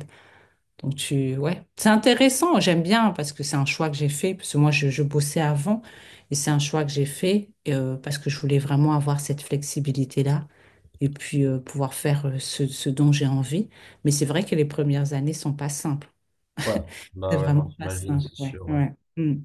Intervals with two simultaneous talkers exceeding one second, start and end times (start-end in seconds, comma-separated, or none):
17.3-18.8